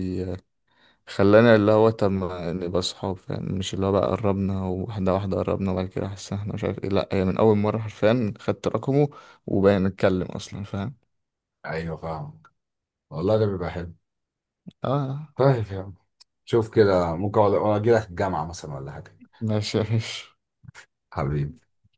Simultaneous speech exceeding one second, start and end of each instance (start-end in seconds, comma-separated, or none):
none